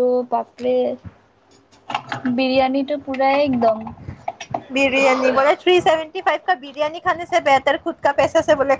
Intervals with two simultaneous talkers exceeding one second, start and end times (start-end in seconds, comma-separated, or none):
none